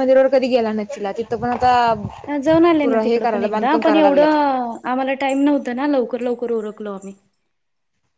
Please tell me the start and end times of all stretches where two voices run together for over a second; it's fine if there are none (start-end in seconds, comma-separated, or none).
2.8-4.3